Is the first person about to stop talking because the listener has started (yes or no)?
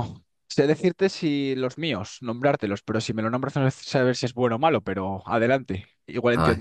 yes